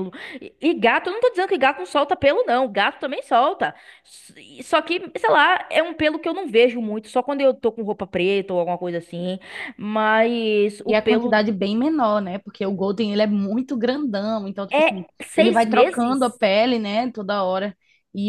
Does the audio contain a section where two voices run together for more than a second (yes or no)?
yes